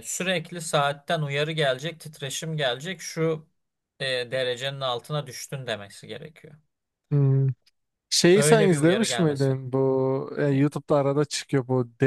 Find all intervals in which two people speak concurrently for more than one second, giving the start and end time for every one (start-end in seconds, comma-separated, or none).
8.3-9.7